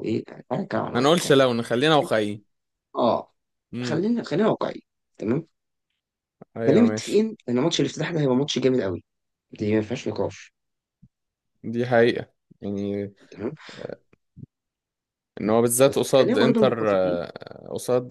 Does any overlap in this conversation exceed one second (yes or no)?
yes